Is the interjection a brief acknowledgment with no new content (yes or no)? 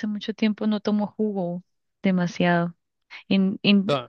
yes